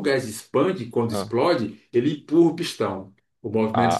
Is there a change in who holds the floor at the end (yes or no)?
yes